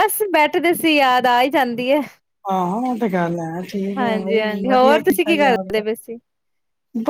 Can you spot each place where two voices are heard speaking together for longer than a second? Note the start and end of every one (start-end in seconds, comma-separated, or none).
4.0-5.8